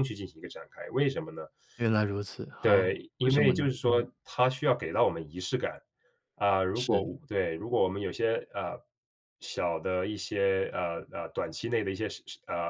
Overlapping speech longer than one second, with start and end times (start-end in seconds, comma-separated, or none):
2.6-4.1